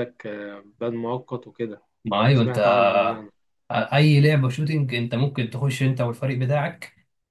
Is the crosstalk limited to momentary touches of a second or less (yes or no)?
yes